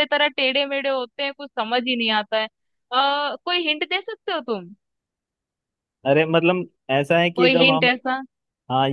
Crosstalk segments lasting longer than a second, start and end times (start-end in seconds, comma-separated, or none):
none